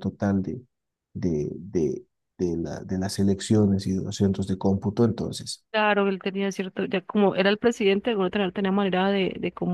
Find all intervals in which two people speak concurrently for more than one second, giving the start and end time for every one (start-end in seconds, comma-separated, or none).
none